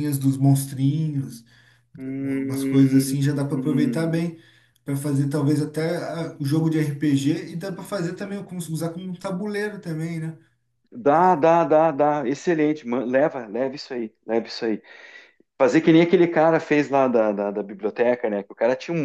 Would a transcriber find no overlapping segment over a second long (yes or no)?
no